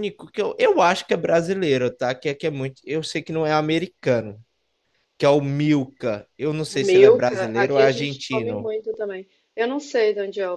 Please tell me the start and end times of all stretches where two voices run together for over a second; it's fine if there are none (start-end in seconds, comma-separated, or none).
6.7-8.7